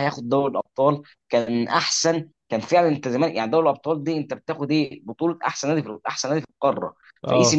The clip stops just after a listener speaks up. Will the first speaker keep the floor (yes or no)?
yes